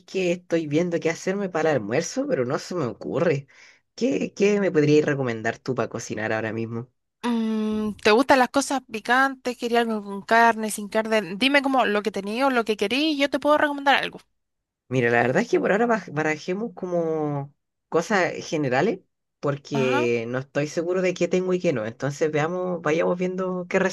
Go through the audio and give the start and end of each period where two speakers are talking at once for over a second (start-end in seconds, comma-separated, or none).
none